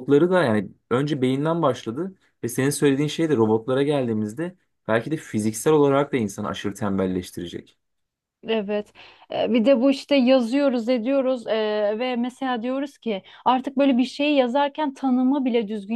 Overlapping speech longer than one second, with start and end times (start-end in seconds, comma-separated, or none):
none